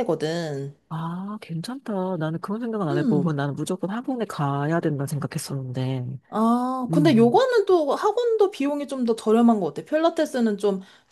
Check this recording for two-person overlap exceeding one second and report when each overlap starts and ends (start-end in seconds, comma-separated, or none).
none